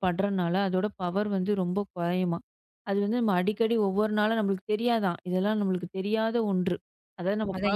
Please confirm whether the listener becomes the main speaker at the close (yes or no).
yes